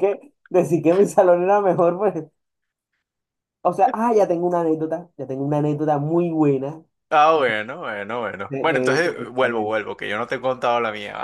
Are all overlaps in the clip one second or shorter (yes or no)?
no